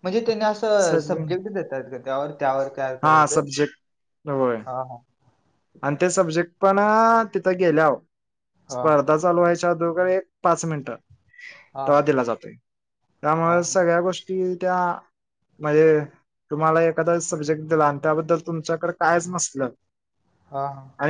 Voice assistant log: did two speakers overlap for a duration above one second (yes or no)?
no